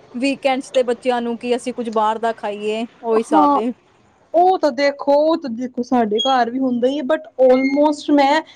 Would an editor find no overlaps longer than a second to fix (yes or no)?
yes